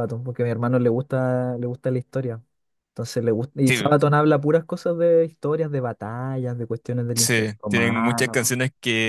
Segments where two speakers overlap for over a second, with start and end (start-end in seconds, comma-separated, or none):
7.2-8.6